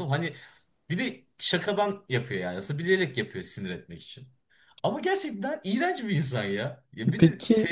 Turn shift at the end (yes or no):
no